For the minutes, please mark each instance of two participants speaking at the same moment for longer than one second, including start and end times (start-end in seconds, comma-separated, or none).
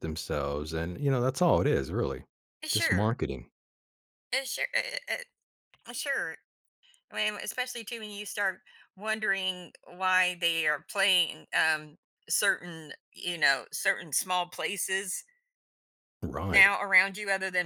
none